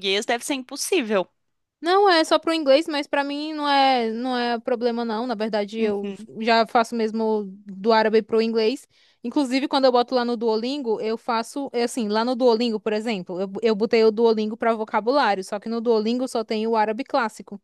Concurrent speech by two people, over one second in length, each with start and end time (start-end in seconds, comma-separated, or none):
none